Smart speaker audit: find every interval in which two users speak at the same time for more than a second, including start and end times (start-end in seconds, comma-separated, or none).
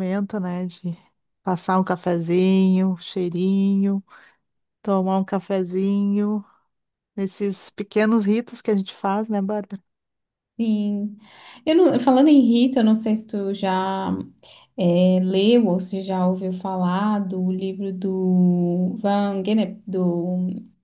none